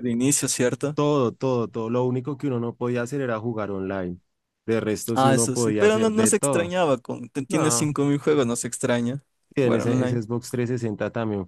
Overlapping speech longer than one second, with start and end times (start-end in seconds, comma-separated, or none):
5.1-6.8